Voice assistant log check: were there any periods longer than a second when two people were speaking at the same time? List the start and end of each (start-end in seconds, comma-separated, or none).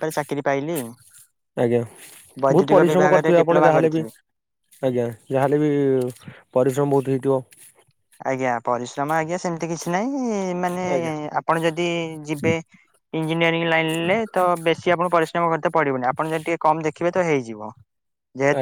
2.4-4.0